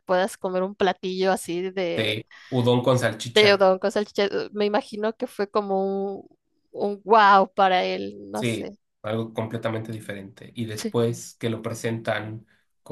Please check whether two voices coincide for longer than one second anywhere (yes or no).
no